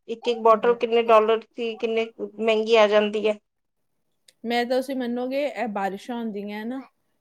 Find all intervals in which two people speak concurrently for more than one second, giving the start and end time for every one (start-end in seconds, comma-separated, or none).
none